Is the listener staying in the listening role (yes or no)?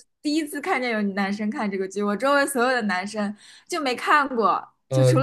yes